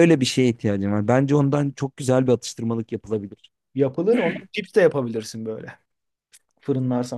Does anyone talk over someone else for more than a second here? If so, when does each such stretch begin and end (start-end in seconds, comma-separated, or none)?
none